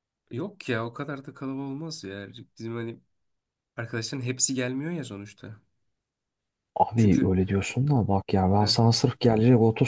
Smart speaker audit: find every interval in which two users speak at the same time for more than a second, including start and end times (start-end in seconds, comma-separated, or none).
none